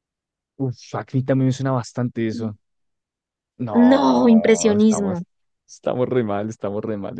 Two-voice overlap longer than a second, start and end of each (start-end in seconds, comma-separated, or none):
3.7-5.2